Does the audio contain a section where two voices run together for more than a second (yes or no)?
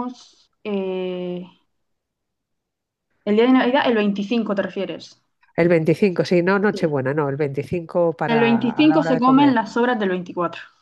yes